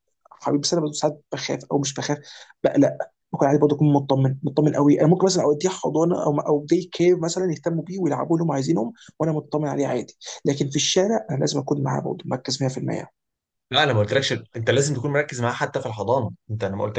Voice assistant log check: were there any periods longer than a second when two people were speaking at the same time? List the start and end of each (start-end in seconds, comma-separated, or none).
none